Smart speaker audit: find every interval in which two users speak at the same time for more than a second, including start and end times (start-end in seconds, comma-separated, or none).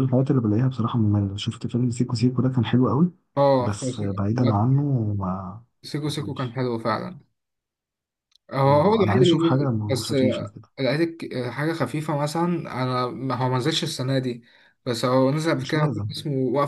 8.6-10.7